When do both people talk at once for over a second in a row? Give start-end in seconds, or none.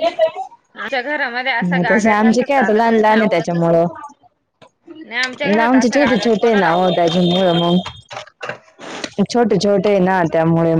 1.6-3.8